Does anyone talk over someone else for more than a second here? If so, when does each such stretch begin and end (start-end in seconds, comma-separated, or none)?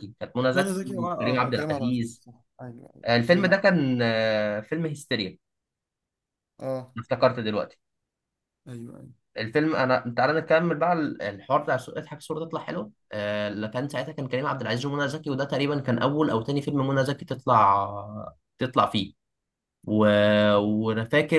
0.5-2.2